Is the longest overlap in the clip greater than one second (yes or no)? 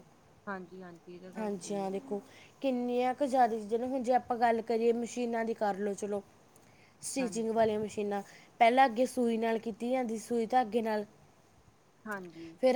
no